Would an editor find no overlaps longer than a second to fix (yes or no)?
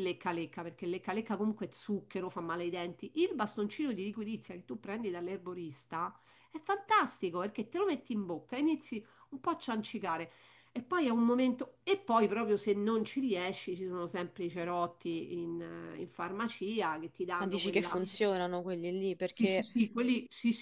yes